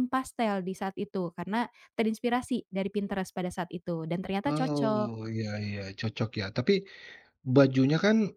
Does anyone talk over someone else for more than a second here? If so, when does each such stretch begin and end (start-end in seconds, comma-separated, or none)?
none